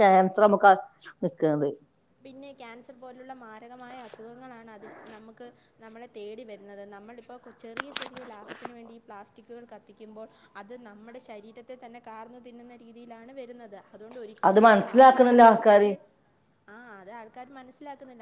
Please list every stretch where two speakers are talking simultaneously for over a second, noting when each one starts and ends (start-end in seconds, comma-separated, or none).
14.5-15.9